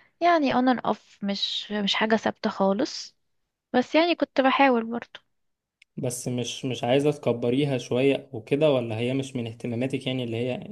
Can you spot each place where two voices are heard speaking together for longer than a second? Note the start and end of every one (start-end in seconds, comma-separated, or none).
none